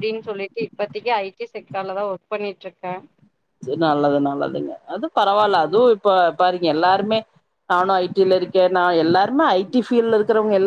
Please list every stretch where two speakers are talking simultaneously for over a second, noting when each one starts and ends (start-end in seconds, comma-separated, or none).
none